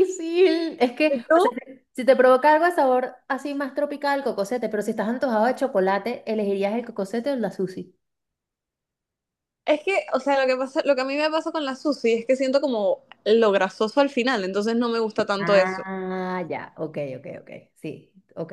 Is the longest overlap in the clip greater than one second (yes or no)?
no